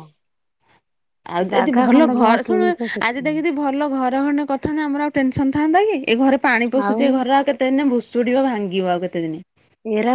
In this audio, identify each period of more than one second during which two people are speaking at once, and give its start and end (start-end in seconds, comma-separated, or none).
1.5-3.3